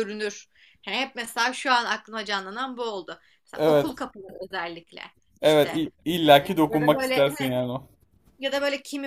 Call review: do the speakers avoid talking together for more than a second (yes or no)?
no